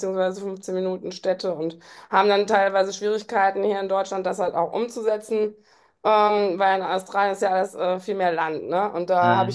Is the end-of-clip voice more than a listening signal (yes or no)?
no